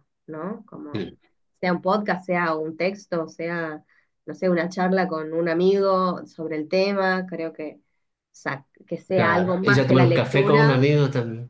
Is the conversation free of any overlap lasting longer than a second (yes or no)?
no